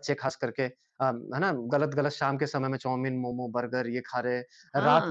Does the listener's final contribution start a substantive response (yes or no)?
no